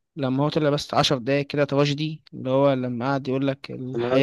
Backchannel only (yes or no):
yes